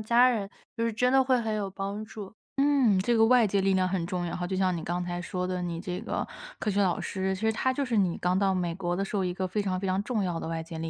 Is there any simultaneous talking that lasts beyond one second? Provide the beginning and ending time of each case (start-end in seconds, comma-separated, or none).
none